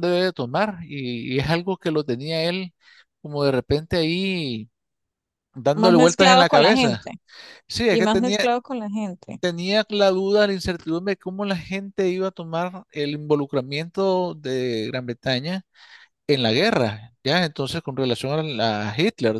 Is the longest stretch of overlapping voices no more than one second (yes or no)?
no